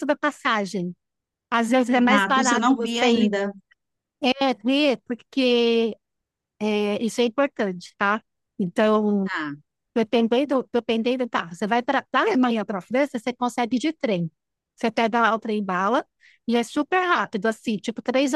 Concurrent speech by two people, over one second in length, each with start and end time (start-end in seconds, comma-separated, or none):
1.9-3.3